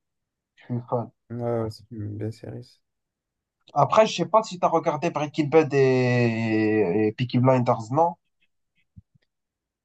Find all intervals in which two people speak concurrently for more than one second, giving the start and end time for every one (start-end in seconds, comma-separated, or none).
none